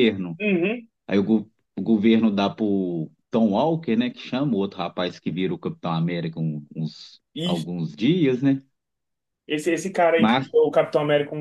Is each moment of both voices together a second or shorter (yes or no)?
yes